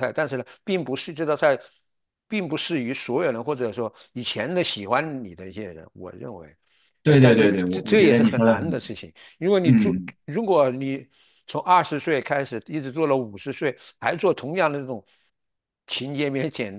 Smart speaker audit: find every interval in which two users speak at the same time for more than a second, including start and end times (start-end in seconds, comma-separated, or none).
7.1-8.8